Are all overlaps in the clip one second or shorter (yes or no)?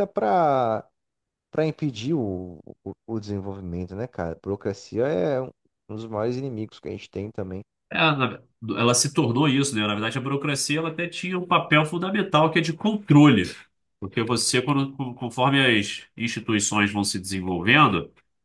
yes